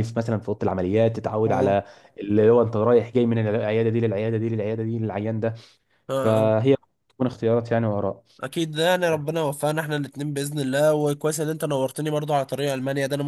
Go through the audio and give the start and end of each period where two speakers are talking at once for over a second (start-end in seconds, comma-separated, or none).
none